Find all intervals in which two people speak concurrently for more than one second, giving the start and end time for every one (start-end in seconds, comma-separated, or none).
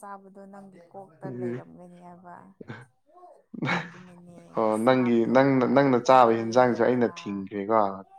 4.8-7.1